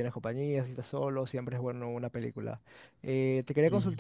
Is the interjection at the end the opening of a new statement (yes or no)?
no